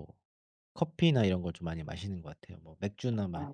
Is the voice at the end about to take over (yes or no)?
no